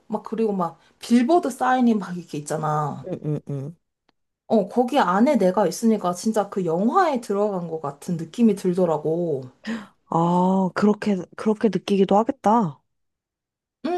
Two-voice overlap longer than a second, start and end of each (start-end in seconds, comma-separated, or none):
none